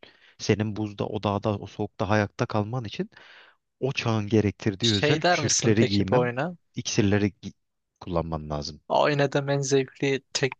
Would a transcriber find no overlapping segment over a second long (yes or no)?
no